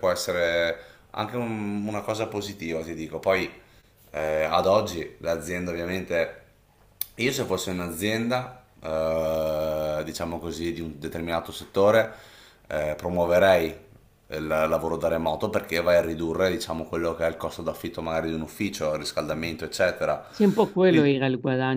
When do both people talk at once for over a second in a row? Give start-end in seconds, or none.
none